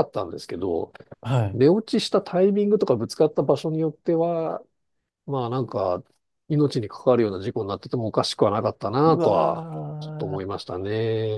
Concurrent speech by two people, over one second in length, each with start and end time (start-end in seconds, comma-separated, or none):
9.1-10.6